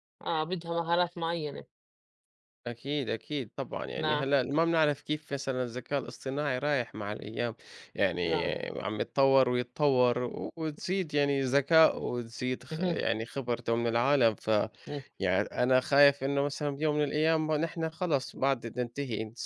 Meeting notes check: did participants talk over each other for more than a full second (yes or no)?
no